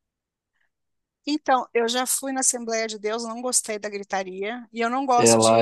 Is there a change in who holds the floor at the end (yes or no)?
no